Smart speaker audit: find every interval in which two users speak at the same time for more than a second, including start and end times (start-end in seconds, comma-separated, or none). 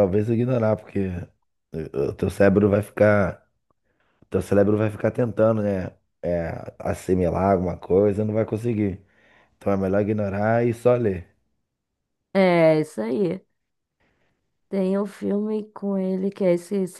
none